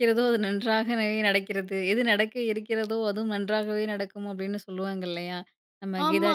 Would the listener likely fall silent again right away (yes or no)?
yes